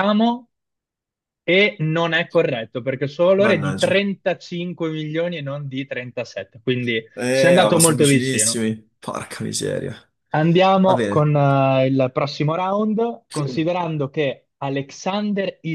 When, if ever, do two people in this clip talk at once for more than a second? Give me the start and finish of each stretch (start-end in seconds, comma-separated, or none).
7.2-8.6